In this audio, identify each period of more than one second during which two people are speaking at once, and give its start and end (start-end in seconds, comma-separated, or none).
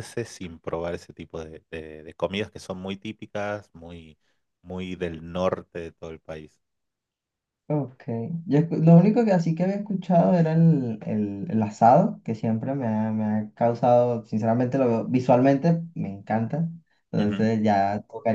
none